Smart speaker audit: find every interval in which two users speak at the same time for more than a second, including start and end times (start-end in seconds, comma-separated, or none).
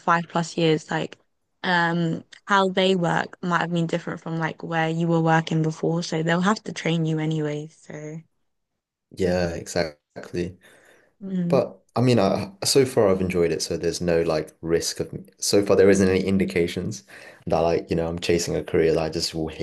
none